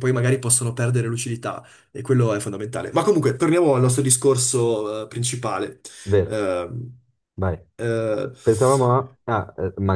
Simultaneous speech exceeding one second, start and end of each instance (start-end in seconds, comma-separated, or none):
none